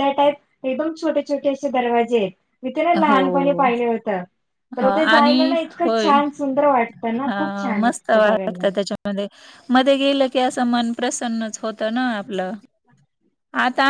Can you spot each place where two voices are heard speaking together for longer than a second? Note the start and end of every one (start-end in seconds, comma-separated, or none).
none